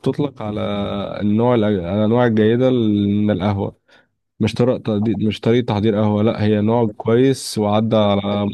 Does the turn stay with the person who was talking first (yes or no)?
yes